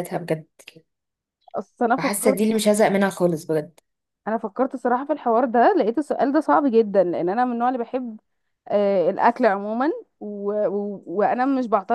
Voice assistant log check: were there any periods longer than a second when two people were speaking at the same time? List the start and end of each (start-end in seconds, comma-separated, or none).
none